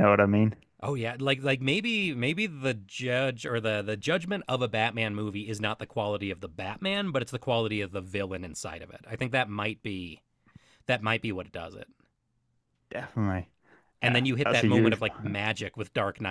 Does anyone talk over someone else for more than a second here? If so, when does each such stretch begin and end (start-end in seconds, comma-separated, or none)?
14.1-15.3